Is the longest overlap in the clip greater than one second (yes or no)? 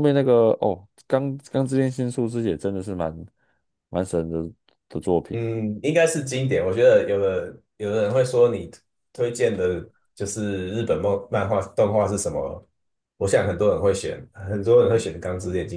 no